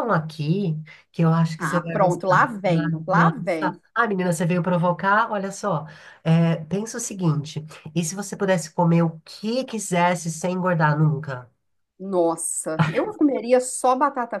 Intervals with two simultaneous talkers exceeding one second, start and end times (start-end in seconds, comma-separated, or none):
1.6-3.8